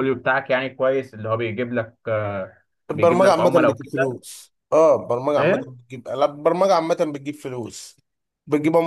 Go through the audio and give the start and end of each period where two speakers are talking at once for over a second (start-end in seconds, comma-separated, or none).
2.9-4.2